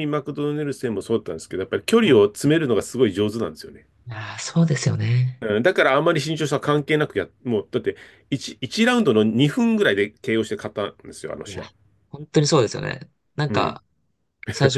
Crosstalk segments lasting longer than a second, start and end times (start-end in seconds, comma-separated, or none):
none